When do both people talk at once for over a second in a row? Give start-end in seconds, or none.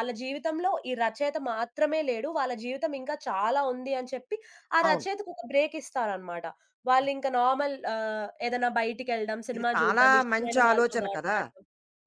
9.6-11.4